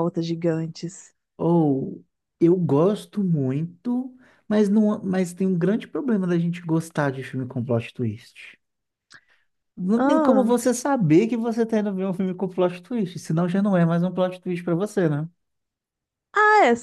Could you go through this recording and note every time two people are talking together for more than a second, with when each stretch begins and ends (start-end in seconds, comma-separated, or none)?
none